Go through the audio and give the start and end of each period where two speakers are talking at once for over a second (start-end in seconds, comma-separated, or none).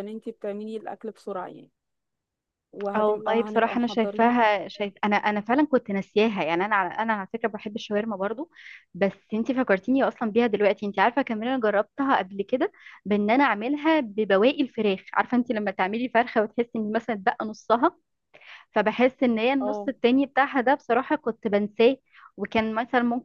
3.0-4.3